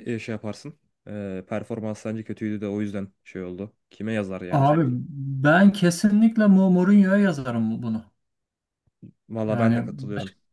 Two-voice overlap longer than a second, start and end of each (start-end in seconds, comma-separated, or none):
none